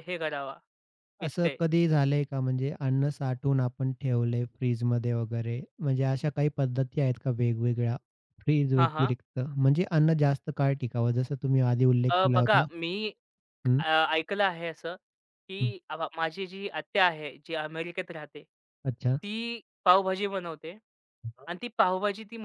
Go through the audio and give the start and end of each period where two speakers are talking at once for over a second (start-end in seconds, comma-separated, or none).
none